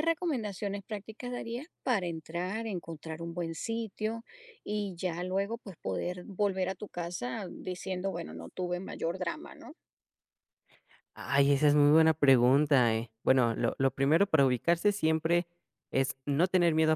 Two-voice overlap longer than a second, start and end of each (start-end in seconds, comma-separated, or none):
none